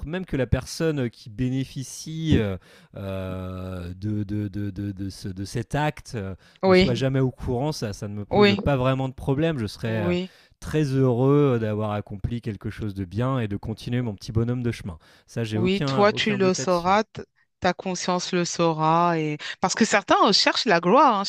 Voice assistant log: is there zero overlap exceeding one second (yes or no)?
no